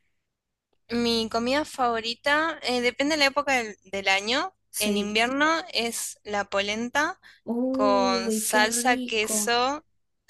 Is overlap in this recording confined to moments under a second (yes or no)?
no